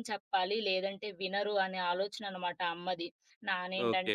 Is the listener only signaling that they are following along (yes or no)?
yes